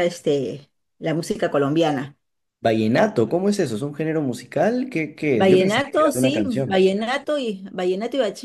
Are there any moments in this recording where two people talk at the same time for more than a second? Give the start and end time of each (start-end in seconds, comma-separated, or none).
5.3-6.8